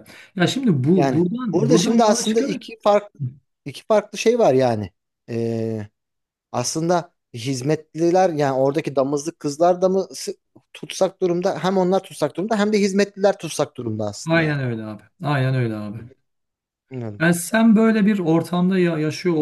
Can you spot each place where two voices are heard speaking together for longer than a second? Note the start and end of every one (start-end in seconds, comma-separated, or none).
0.9-2.6